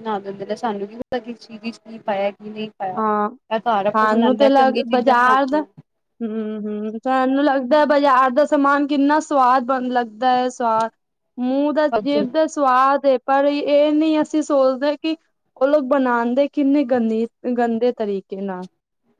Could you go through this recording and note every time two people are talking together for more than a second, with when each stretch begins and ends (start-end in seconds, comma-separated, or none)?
4.0-5.6